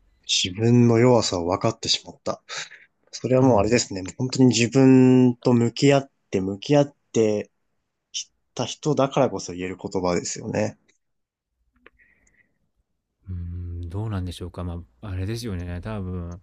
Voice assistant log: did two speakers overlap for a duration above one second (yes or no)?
no